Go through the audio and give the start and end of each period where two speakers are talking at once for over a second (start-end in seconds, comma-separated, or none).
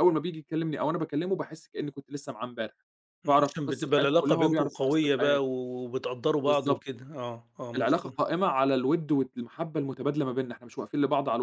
3.3-5.5